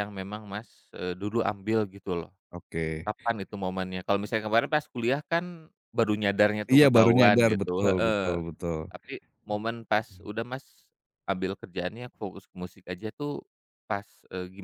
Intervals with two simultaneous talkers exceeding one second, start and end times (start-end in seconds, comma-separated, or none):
6.8-8.4